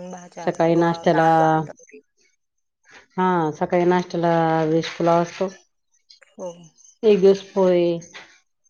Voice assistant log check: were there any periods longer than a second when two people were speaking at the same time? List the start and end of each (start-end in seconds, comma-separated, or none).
none